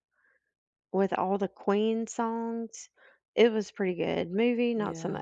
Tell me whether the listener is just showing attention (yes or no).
no